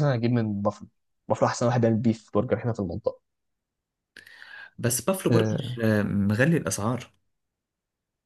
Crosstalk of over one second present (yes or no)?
no